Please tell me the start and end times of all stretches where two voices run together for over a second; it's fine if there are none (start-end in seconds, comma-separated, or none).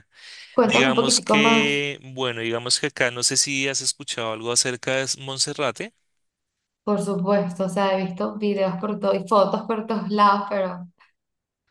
0.6-1.9